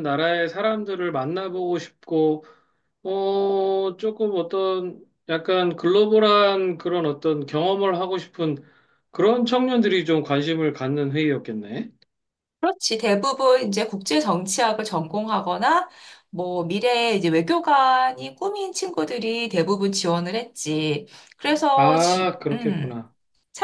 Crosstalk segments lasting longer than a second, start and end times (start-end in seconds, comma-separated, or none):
21.8-23.0